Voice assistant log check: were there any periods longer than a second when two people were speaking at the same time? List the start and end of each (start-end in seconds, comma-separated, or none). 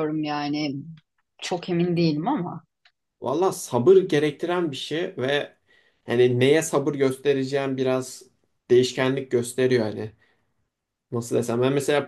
none